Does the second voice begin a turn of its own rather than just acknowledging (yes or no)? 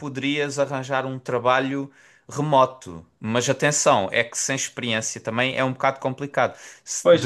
yes